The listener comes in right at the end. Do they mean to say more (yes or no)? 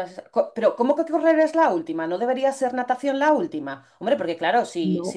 no